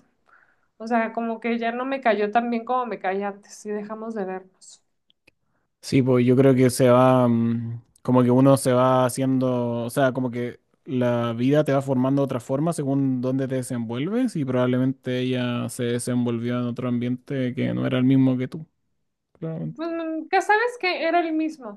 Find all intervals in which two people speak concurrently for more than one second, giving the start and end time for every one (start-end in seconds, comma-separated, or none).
none